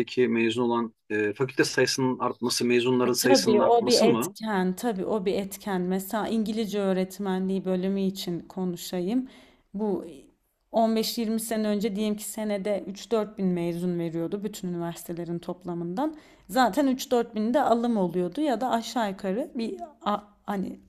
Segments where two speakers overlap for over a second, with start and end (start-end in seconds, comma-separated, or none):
3.0-4.4